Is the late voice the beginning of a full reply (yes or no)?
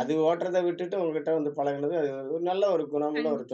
yes